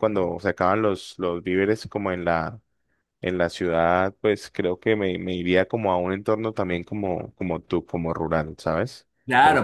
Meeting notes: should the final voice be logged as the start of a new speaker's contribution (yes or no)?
yes